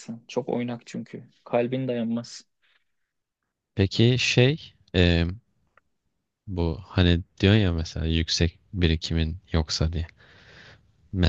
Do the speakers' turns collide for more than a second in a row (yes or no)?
no